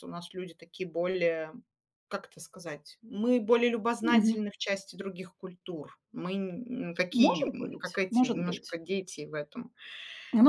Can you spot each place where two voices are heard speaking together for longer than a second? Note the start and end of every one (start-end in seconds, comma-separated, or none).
7.1-8.8